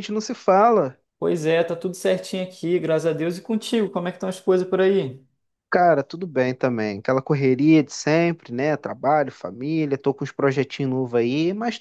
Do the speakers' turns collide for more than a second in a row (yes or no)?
no